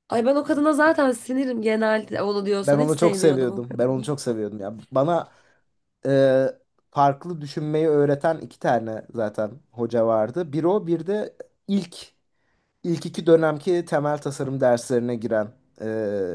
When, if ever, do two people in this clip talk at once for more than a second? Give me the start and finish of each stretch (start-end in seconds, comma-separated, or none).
2.6-4.1